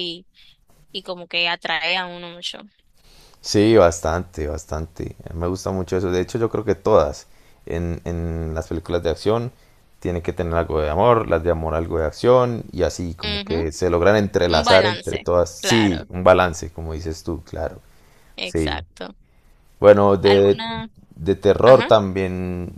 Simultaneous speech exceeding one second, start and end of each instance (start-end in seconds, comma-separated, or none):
14.5-16.1